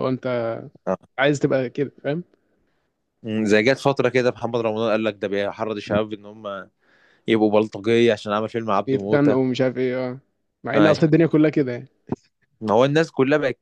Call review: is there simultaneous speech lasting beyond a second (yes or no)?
no